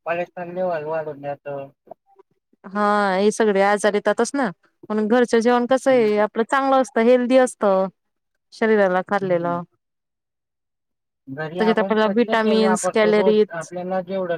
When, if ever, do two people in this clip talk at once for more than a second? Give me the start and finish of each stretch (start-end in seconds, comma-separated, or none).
11.6-13.5